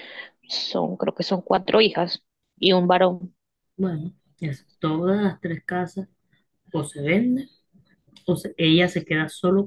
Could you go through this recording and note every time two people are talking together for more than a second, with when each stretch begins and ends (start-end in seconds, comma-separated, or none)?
none